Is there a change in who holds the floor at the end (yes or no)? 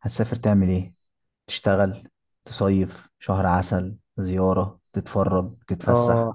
yes